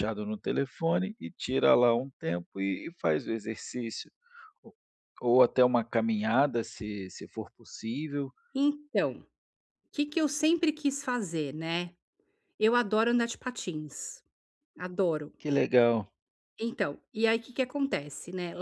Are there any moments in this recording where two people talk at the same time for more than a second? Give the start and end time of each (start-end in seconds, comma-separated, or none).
none